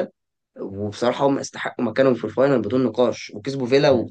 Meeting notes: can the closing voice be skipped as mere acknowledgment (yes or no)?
no